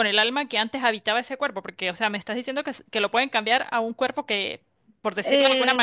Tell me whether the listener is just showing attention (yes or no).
yes